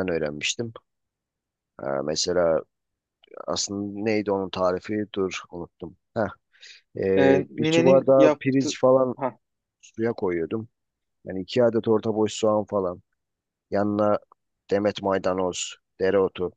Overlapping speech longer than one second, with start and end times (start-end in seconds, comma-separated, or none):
7.2-8.8